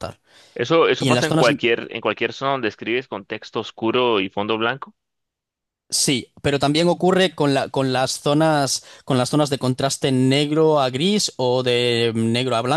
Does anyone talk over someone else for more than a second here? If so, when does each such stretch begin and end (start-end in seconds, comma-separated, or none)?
none